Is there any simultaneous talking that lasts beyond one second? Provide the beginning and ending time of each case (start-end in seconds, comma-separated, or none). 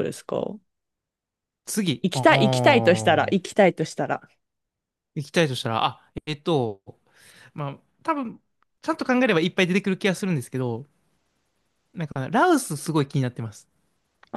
2.0-3.4